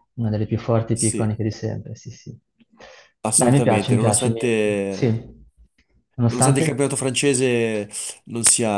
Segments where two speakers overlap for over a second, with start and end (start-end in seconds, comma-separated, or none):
3.3-5.1